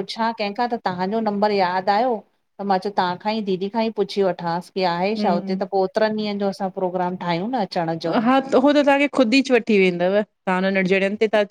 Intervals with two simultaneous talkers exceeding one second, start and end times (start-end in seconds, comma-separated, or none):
none